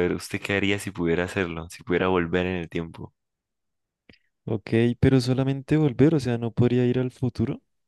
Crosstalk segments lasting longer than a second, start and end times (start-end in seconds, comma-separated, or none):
none